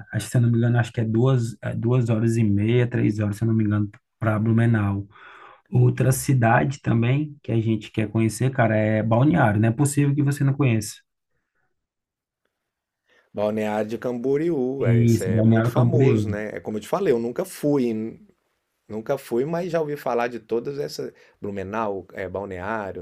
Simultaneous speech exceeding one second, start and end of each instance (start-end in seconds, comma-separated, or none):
14.8-16.4